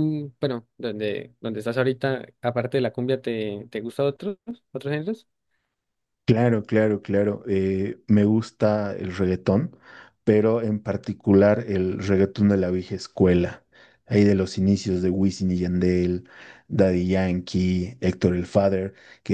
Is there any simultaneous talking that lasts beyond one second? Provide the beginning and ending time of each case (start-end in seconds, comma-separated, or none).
none